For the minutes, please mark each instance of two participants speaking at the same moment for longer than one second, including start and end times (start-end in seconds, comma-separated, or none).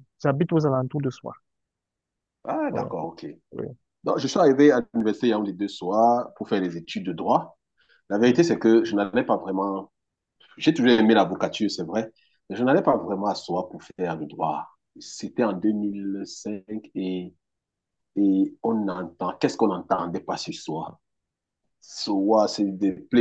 none